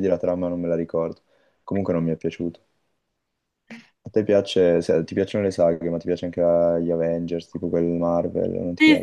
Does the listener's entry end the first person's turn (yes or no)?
yes